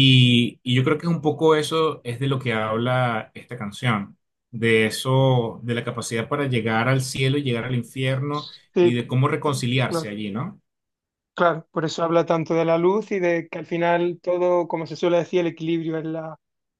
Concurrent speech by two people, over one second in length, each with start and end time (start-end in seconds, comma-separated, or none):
none